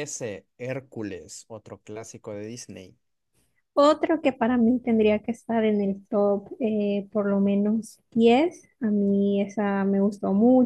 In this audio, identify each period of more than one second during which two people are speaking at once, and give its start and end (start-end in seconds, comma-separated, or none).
none